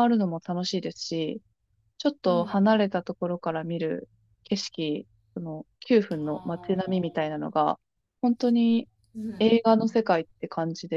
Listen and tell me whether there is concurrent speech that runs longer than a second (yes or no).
yes